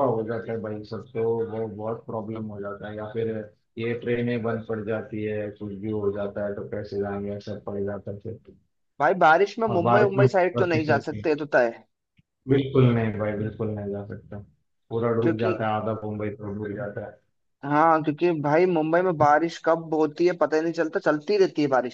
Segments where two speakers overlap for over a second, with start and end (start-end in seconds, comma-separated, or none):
9.7-11.3